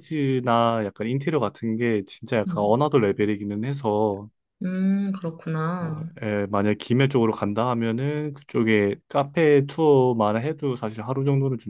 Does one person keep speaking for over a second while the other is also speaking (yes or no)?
no